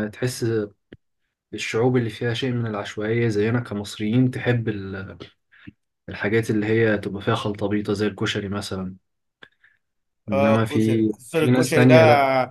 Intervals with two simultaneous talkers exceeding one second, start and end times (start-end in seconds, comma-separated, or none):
10.3-11.9